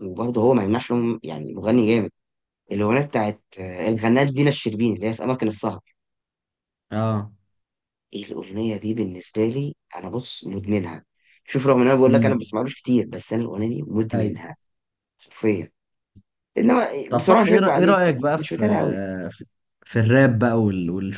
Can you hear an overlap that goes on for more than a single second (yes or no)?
yes